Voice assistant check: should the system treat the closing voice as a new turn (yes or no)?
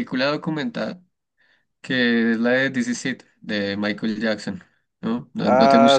yes